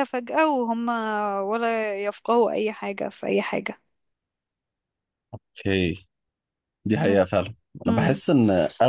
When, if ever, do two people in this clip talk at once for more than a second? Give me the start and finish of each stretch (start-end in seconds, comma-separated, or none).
none